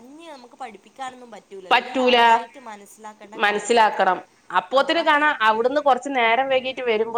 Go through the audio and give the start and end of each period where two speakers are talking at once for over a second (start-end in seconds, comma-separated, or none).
none